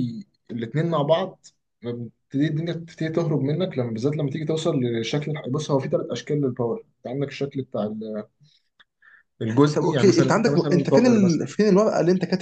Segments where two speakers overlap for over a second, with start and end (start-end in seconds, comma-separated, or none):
9.7-11.5